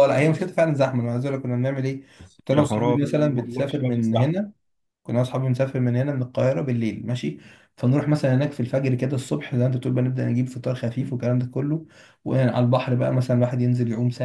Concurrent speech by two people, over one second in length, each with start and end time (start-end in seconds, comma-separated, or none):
2.5-4.3